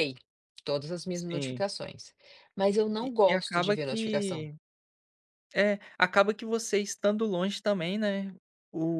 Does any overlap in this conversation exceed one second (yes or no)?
yes